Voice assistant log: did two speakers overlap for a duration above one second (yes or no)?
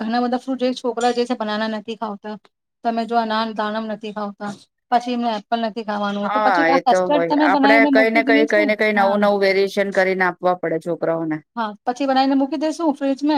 yes